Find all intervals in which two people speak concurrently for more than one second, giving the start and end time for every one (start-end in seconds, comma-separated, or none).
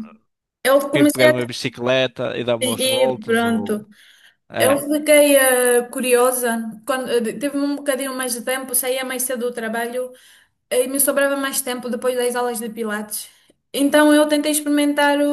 2.6-3.9